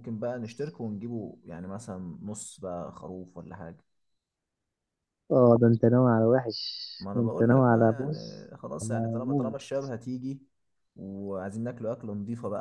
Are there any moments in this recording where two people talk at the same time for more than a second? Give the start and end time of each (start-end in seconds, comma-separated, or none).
7.1-9.6